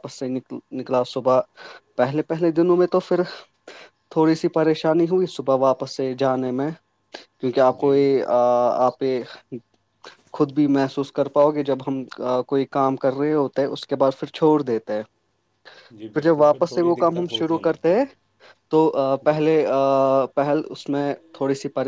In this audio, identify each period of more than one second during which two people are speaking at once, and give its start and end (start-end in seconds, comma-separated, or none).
16.1-18.1